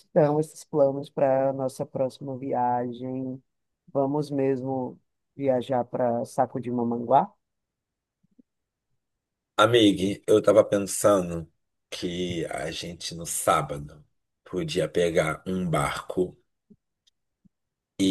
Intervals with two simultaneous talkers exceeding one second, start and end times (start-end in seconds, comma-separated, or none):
none